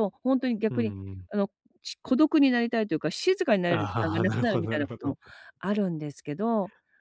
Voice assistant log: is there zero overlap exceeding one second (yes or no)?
no